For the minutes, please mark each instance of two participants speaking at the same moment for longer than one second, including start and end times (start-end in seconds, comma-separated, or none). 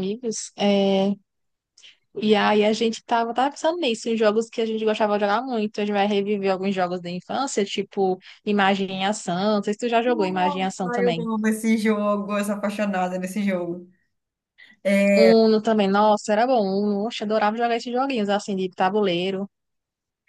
10.0-11.3